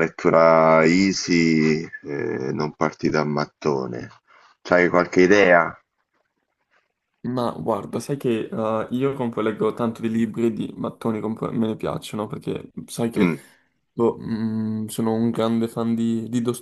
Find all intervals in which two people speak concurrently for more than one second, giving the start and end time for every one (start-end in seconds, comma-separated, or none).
none